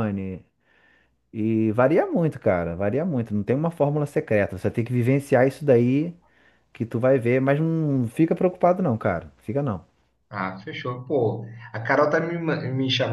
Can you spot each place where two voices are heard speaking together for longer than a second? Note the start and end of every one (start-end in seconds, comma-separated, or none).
none